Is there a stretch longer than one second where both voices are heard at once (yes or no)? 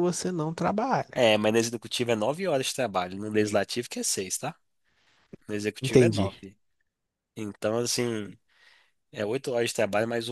no